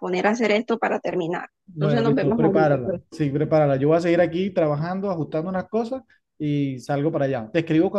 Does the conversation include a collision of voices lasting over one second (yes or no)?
yes